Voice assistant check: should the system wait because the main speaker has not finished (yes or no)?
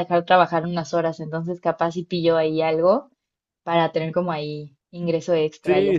no